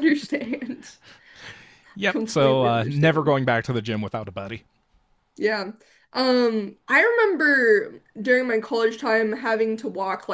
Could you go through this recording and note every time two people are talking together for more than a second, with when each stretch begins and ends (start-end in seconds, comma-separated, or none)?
1.9-3.3